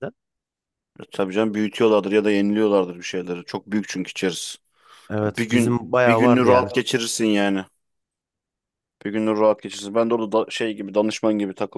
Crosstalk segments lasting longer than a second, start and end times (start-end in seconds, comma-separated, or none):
5.2-6.7